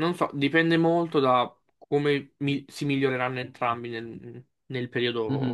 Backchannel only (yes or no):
no